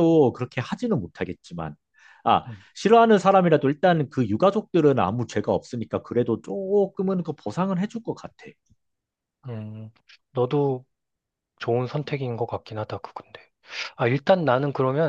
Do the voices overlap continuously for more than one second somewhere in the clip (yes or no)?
no